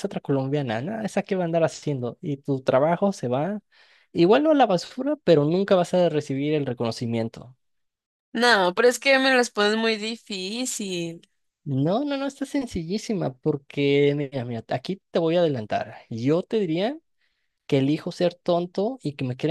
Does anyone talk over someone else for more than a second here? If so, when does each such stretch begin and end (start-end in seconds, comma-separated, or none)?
none